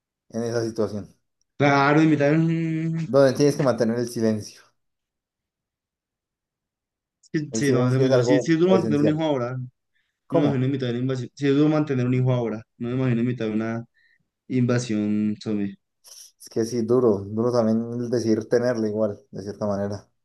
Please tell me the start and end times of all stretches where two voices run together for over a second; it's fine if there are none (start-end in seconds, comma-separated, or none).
7.5-9.3